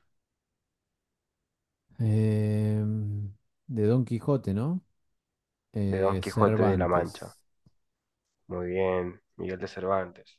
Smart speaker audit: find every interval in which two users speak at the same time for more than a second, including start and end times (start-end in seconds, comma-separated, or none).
5.9-7.3